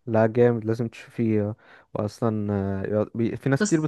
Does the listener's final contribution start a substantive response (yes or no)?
no